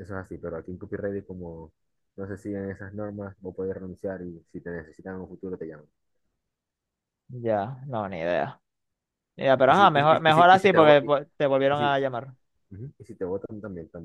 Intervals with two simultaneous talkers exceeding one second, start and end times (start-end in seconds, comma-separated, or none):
9.7-11.1